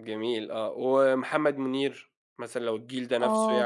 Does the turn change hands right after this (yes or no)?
yes